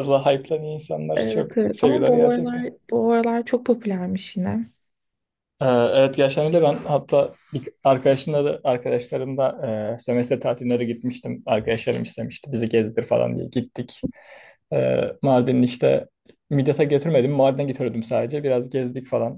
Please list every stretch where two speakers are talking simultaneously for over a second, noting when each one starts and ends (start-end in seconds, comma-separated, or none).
1.2-2.6